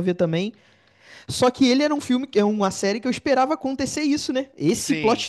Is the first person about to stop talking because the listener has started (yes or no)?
no